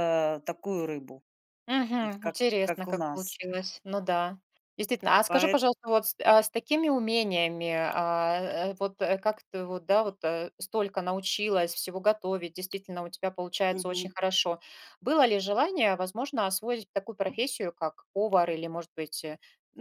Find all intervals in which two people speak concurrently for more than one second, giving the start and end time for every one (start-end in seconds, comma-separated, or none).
2.0-3.4